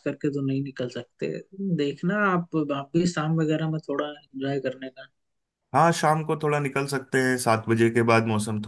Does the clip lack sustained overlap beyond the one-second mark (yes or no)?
yes